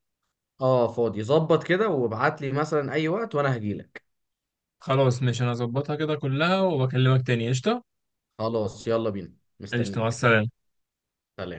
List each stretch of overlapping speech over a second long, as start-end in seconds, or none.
none